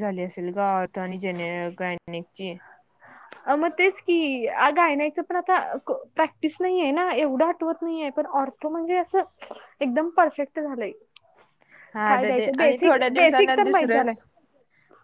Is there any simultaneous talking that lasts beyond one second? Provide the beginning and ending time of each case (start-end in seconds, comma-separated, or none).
12.1-14.1